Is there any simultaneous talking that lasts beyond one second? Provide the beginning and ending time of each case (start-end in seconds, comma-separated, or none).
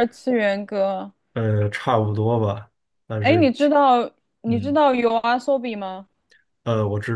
none